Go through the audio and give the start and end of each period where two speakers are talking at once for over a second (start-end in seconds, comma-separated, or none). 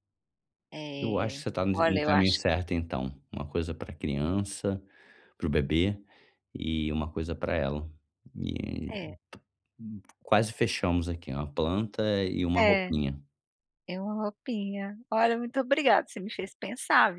1.0-2.5